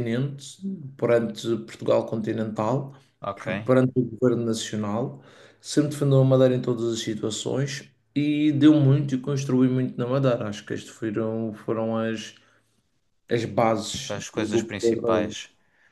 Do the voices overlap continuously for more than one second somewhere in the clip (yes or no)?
yes